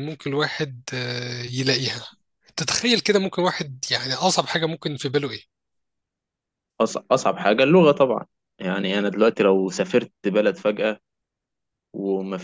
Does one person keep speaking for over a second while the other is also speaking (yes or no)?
no